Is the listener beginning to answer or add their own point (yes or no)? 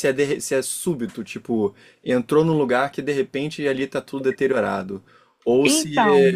no